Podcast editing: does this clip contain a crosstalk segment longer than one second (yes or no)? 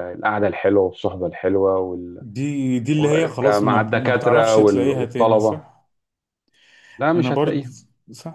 yes